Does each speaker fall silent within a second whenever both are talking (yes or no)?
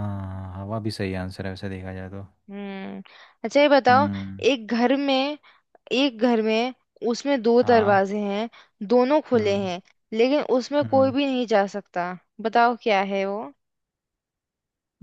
yes